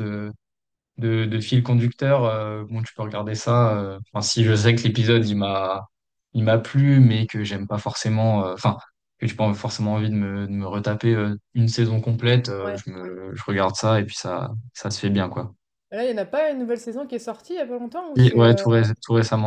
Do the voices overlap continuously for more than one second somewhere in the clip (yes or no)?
no